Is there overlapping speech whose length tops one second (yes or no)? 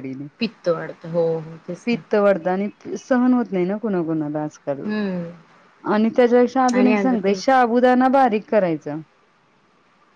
no